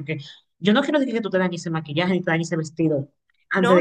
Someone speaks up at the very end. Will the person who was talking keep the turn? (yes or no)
no